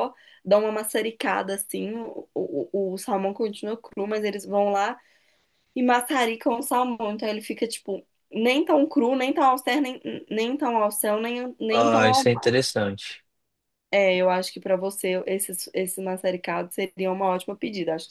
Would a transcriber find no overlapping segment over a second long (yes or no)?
yes